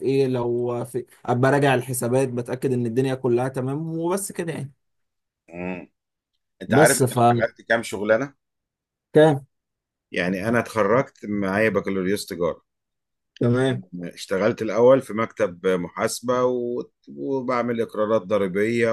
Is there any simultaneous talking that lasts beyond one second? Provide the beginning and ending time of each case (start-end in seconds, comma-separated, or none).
none